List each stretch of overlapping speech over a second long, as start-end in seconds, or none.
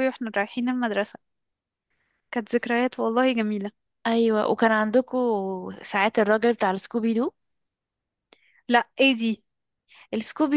none